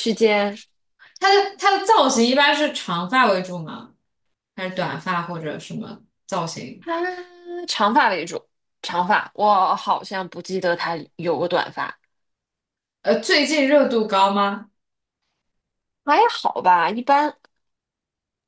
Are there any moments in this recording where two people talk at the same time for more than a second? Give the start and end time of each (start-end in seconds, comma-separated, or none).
none